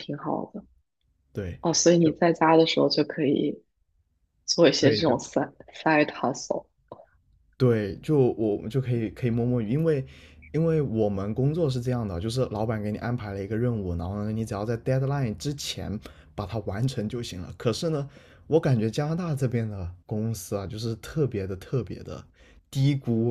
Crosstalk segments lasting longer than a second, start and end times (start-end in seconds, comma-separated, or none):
none